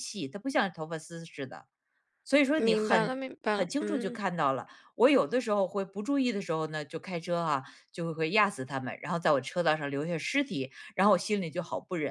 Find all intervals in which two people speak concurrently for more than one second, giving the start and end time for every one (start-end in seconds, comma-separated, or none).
2.6-4.2